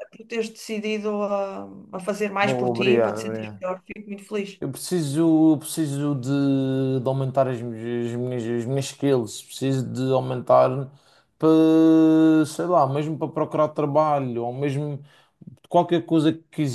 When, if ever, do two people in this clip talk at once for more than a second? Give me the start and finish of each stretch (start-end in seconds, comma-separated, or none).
2.4-3.6